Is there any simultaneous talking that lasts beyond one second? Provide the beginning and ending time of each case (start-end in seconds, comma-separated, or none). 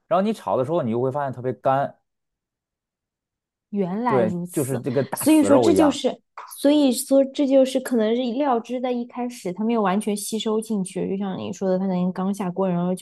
4.0-6.0